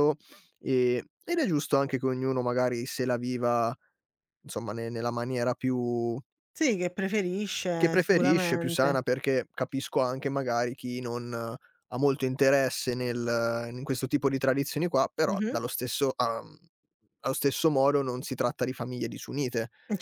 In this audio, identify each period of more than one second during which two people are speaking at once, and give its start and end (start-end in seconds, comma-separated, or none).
7.8-9.0